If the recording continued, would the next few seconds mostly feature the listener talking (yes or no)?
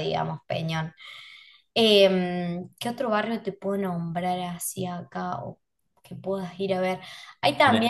yes